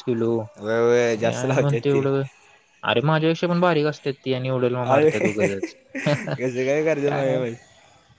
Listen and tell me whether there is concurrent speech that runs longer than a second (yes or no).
yes